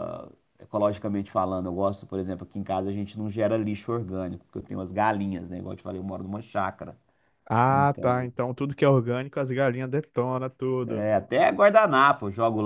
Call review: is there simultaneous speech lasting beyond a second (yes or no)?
no